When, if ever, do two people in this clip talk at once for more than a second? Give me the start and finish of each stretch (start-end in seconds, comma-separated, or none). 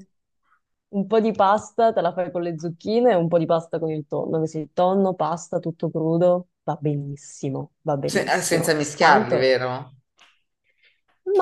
8.0-9.5